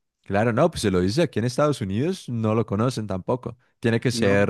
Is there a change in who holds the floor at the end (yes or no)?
yes